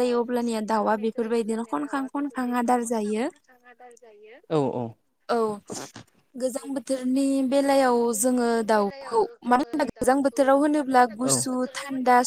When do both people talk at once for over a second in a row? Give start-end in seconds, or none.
none